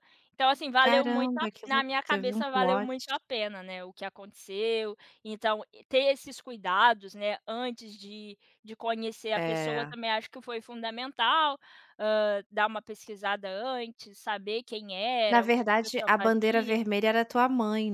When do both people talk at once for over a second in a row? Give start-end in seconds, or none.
0.8-2.9, 15.2-16.8